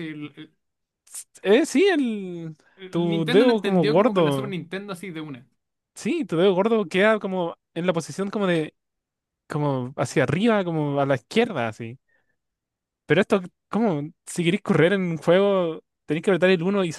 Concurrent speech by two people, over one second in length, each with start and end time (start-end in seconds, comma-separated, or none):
2.8-4.5